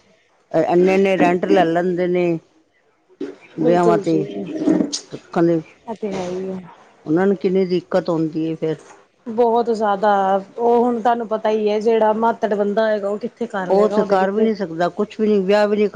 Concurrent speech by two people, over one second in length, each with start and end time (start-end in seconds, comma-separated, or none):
none